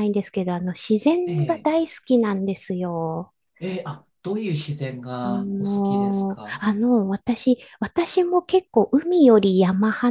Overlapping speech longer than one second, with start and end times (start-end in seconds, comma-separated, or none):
5.2-6.6